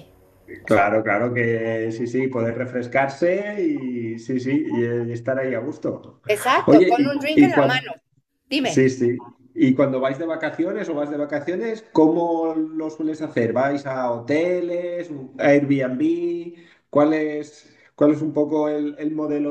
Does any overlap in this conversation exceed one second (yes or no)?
yes